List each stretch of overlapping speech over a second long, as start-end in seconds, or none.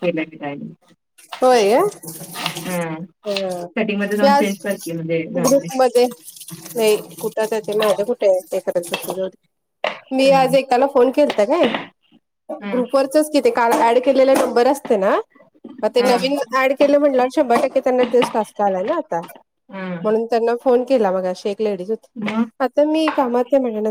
none